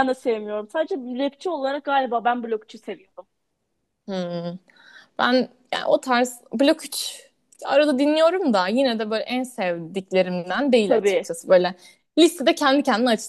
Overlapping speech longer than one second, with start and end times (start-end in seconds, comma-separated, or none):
none